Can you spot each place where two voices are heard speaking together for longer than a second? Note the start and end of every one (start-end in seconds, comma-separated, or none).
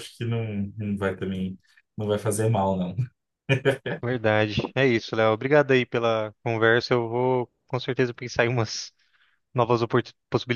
none